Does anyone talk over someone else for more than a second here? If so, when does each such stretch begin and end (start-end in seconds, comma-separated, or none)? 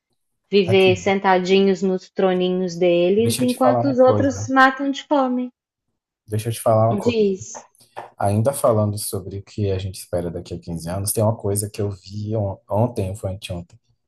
3.2-4.5